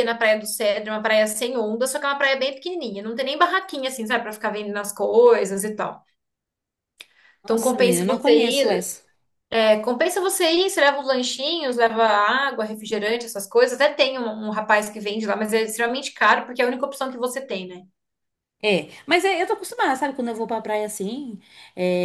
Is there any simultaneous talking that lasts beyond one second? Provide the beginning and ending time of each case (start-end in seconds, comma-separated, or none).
7.4-8.9